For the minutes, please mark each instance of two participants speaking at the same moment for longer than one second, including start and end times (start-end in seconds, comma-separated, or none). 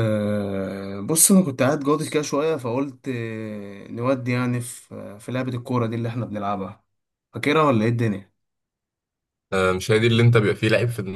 none